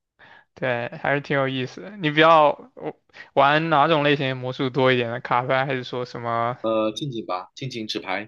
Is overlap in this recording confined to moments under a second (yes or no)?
yes